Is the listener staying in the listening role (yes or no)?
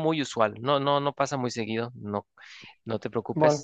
no